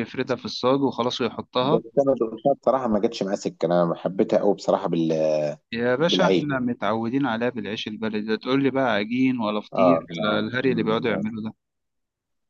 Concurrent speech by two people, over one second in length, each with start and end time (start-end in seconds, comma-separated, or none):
9.7-11.2